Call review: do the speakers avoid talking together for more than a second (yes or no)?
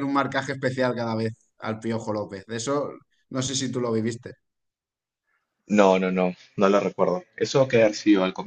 yes